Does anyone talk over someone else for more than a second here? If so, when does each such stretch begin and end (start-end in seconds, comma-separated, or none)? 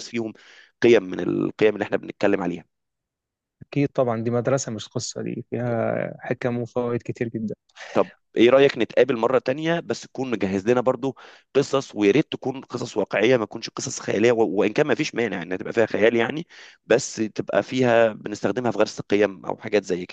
none